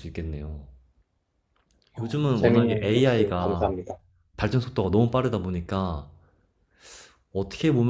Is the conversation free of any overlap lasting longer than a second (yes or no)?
no